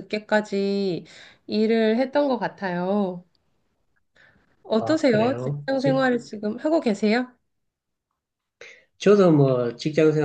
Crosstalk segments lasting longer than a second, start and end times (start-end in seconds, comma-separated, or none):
4.8-6.0